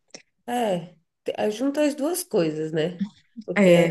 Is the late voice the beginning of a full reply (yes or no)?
yes